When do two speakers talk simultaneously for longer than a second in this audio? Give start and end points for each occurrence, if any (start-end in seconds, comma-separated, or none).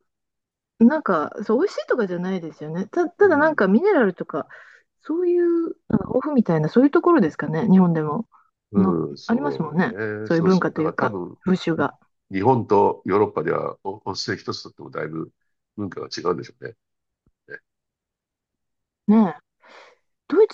8.8-11.4